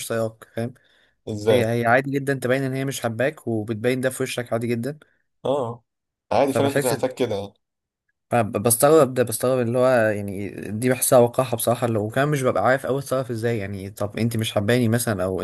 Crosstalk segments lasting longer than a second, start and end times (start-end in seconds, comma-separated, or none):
none